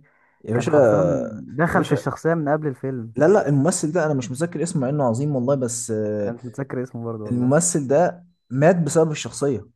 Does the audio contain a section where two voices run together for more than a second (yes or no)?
no